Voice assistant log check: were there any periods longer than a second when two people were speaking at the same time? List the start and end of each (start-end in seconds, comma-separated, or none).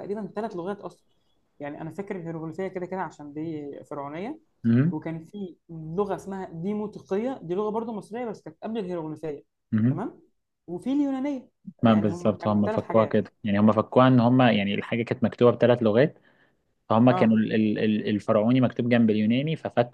11.8-13.2